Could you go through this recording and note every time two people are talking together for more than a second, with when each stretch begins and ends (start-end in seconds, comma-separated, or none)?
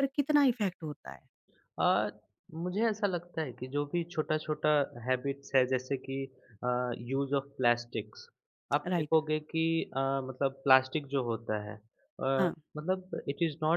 none